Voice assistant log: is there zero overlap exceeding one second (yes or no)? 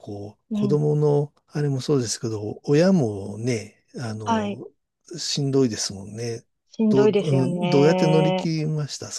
no